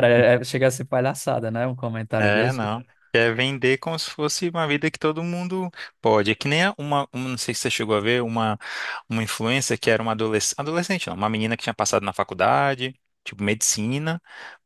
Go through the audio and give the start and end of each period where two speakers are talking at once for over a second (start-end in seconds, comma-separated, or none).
none